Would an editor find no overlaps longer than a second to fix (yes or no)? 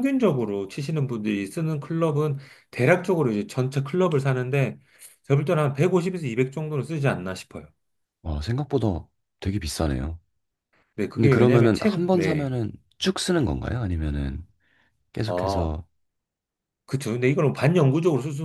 no